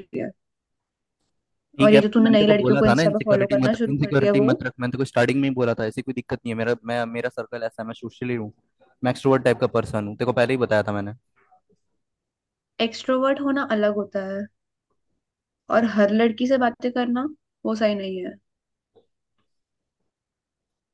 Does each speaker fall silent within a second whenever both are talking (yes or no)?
no